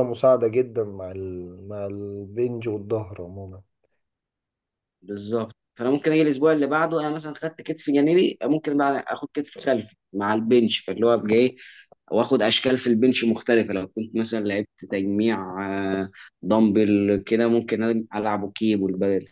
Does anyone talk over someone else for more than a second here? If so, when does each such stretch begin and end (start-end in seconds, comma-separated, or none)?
none